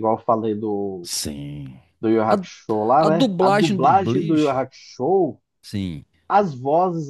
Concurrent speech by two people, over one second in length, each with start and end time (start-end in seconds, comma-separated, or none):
3.0-4.6